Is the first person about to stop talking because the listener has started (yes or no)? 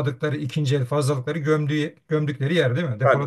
yes